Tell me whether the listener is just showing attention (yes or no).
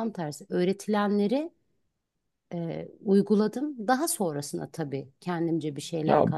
no